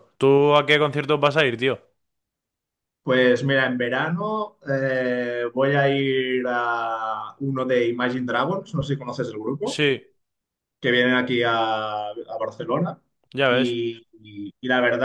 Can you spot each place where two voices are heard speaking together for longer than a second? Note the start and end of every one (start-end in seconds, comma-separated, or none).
none